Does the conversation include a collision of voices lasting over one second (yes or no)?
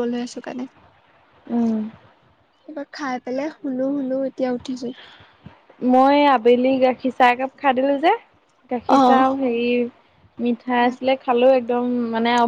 no